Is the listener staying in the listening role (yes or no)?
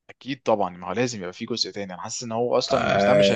yes